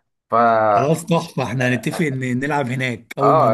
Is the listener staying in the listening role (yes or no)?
no